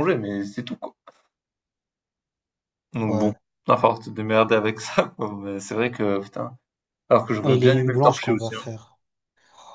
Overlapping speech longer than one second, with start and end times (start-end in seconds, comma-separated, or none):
7.4-8.6